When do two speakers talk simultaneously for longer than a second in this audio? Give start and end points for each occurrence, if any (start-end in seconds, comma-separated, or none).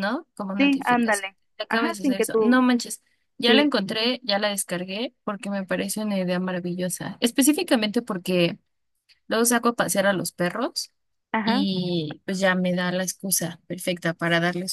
0.6-2.6